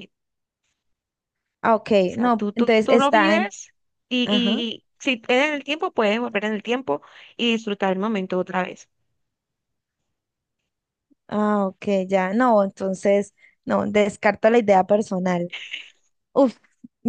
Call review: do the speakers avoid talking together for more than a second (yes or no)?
no